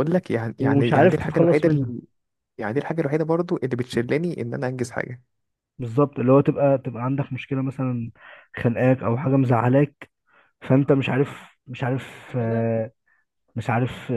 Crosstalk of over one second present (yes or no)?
yes